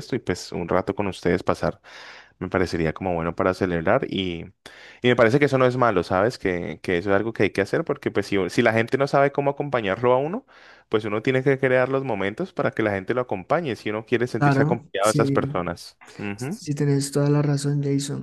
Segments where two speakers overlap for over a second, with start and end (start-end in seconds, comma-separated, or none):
14.4-15.6